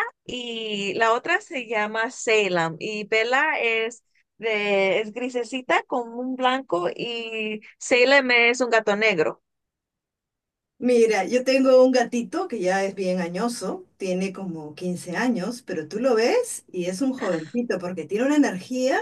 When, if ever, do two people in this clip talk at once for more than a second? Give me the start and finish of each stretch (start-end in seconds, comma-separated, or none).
none